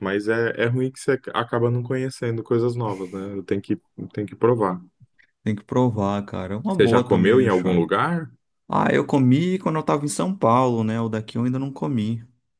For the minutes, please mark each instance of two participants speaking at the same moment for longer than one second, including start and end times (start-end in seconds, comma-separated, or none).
6.7-7.9